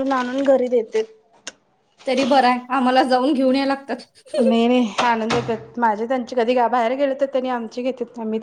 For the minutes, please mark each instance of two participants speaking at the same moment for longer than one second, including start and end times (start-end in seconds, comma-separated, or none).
none